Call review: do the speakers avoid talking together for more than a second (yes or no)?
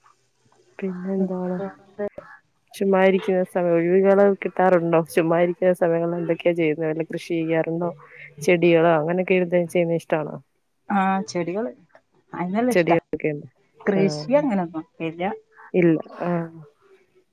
yes